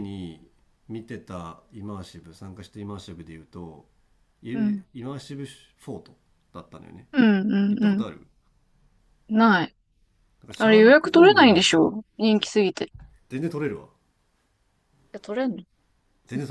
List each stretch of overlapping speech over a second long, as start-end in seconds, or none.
10.6-11.9